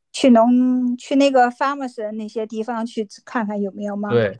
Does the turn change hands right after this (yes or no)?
yes